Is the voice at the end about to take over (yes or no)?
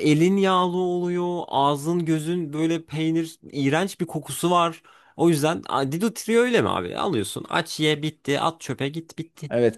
no